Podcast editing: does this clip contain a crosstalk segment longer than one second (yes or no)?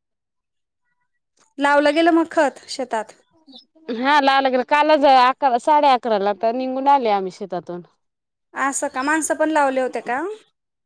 no